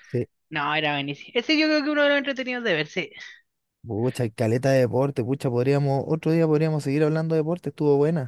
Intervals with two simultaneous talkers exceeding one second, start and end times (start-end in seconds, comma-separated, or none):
none